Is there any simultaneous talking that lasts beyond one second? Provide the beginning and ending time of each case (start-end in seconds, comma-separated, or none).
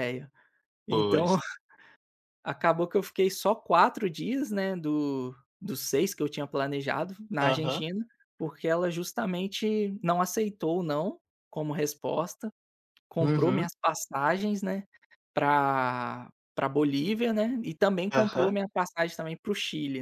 none